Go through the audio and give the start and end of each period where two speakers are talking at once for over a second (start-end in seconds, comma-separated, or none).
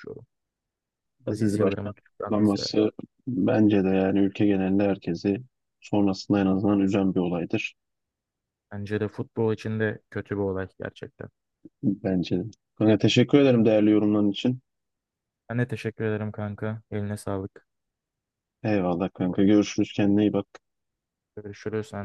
1.3-2.7